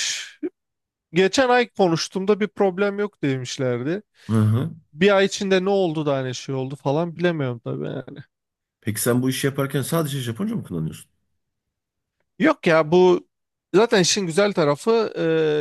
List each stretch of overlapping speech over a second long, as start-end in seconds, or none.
none